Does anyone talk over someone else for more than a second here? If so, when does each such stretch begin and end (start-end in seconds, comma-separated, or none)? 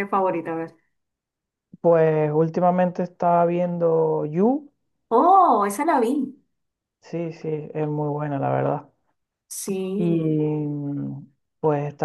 none